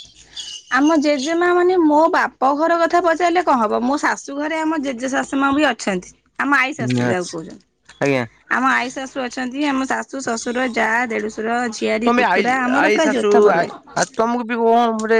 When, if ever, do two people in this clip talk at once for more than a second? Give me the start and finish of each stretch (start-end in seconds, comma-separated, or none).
none